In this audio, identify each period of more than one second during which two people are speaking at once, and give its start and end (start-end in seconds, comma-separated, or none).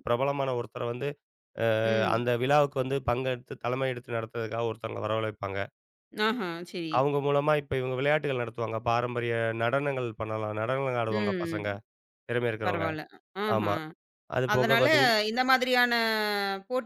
none